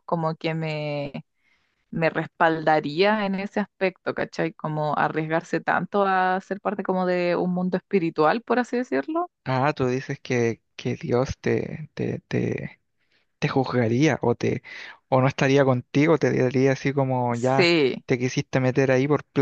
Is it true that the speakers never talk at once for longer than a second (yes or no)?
yes